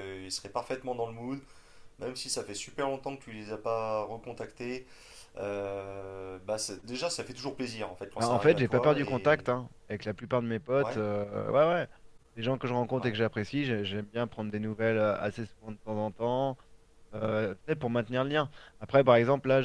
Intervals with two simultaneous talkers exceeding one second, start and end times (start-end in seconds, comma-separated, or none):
8.2-9.4